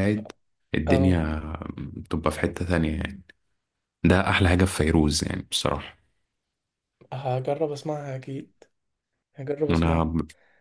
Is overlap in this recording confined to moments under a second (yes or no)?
yes